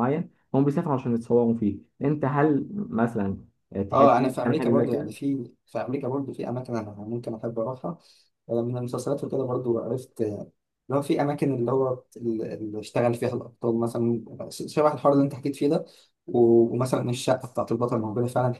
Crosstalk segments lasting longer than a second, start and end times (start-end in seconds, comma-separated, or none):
3.9-5.1